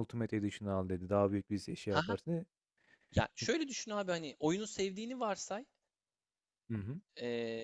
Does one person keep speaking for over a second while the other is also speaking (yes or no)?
no